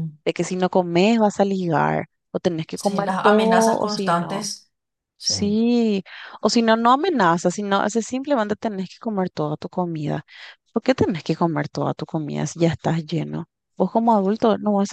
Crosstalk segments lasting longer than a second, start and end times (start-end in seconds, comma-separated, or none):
2.7-4.5